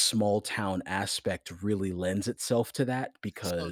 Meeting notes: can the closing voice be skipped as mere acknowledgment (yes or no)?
yes